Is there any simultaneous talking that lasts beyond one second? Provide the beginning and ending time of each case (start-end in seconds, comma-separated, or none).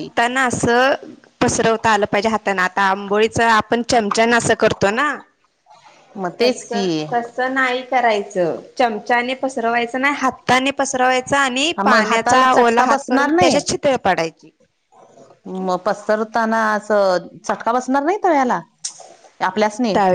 11.8-13.6